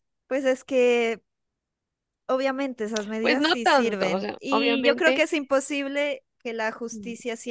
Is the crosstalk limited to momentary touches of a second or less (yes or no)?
no